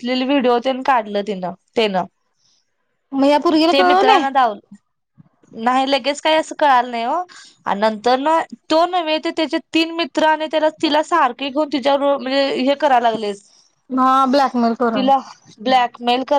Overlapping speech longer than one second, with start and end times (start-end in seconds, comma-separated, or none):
none